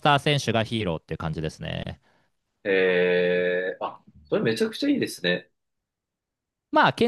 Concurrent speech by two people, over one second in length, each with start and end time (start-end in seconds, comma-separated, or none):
none